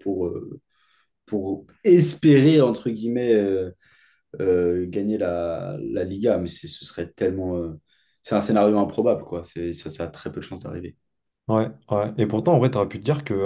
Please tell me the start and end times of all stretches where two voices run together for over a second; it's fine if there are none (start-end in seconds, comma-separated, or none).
none